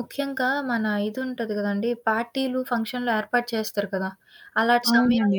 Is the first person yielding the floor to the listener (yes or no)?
no